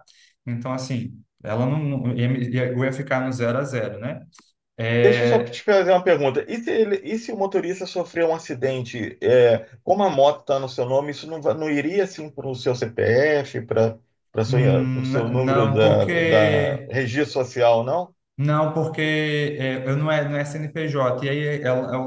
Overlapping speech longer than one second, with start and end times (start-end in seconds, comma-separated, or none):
14.9-16.9